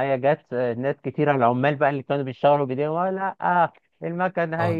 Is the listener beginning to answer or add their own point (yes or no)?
no